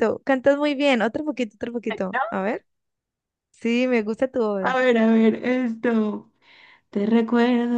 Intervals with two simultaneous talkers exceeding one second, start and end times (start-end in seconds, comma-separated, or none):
none